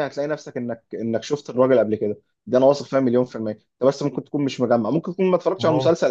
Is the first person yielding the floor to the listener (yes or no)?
no